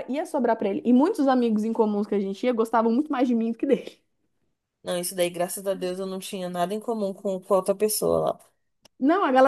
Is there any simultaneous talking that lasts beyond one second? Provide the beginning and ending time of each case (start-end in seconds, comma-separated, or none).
none